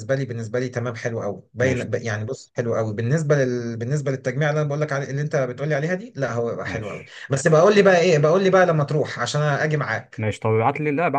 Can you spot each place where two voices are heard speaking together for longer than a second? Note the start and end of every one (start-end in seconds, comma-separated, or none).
none